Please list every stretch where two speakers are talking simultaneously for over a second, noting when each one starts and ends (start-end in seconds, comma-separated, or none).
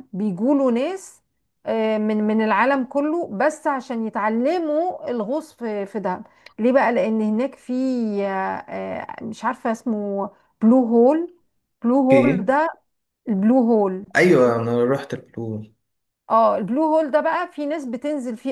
none